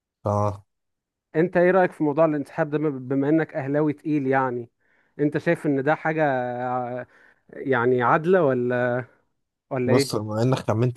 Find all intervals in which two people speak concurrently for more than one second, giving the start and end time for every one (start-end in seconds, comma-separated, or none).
none